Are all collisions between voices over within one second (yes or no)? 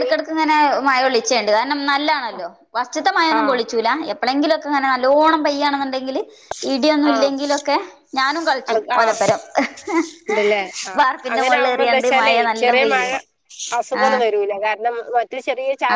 no